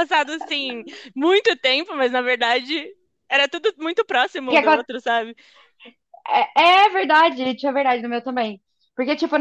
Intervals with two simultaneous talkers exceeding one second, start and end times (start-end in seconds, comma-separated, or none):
none